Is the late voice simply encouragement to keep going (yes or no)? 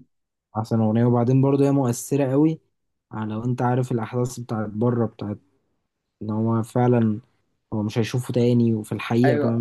no